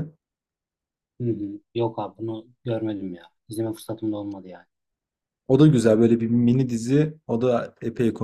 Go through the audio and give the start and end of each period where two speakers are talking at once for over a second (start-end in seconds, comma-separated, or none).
none